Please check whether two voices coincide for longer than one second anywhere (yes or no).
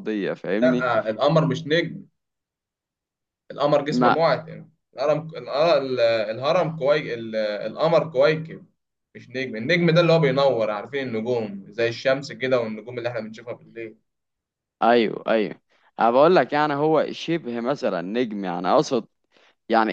no